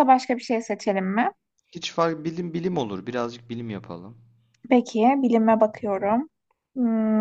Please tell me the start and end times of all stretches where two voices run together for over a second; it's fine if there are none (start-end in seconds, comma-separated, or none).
none